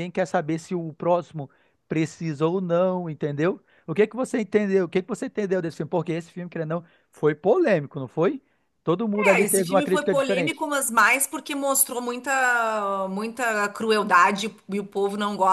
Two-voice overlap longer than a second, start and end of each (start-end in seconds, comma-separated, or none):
9.1-10.7